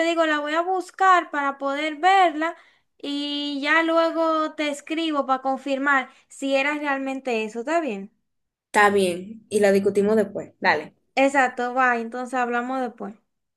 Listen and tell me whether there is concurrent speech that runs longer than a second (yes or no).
no